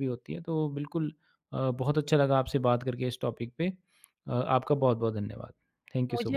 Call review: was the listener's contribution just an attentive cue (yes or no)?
no